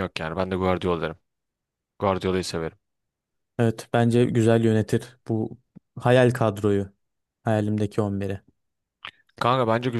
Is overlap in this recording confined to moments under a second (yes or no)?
yes